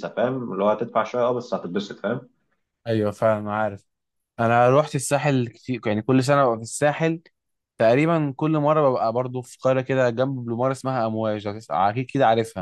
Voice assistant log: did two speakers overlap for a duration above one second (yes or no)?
no